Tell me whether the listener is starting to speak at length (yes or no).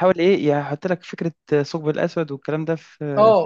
yes